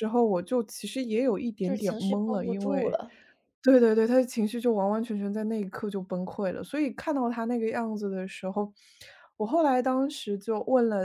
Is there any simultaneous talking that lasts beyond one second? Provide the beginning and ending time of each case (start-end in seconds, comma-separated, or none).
1.6-3.0